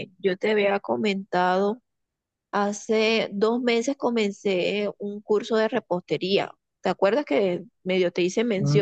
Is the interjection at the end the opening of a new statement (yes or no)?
yes